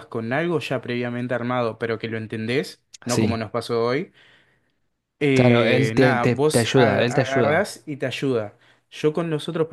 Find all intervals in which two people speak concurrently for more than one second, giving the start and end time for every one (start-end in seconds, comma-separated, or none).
5.3-7.7